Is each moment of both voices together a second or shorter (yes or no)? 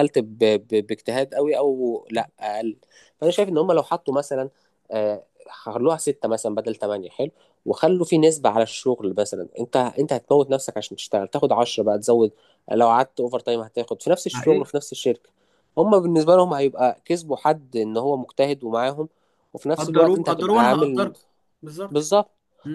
no